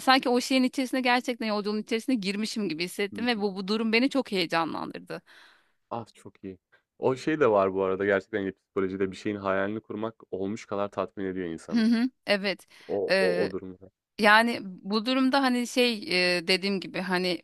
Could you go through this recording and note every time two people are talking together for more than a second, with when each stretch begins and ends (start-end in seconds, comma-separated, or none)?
none